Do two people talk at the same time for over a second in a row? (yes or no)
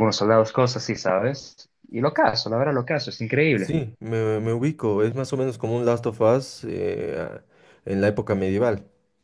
no